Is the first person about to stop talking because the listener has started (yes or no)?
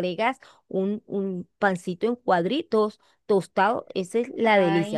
yes